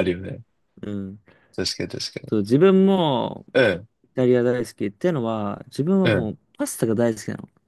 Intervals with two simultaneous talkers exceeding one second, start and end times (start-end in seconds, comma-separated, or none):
none